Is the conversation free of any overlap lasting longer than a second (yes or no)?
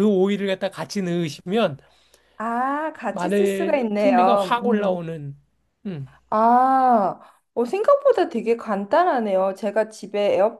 no